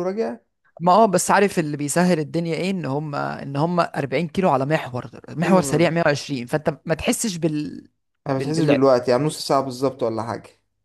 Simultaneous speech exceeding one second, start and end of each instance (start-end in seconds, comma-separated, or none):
none